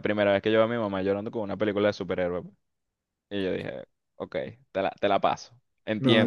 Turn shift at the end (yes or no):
yes